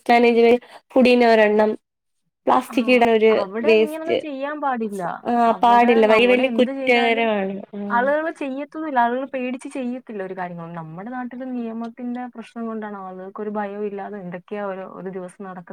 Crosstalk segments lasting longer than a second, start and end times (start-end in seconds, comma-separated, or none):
5.5-7.2